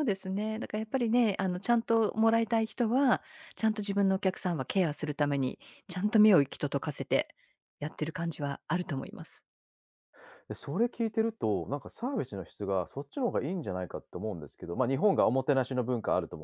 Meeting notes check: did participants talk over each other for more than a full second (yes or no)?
no